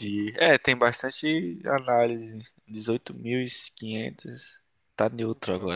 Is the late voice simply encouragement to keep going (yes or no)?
yes